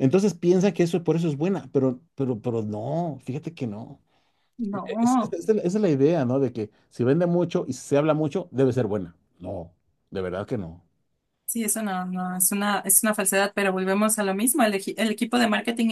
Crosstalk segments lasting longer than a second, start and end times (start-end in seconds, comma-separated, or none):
none